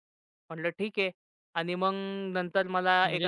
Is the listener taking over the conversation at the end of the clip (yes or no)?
no